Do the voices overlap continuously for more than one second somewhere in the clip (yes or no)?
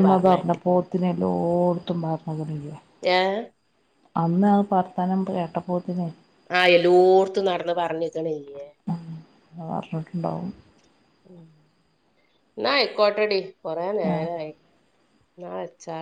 no